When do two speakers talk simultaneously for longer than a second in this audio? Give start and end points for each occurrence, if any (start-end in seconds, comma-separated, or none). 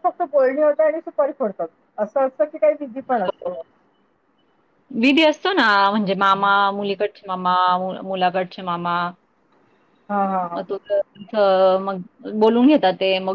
none